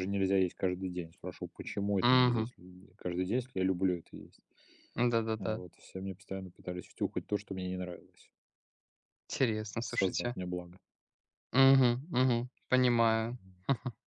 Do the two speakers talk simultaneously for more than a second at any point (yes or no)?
no